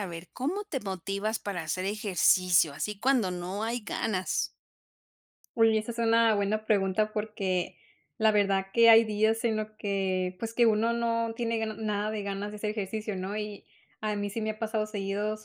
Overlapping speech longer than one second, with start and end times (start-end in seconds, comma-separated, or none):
none